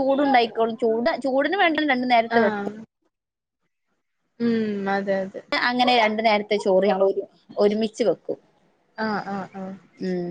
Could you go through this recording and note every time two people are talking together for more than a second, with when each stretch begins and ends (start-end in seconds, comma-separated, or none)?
none